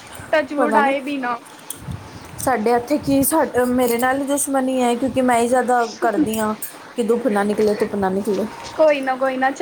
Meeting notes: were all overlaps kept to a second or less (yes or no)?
yes